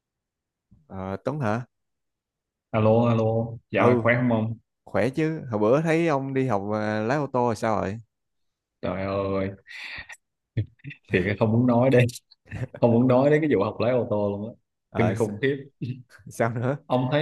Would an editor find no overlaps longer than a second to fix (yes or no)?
yes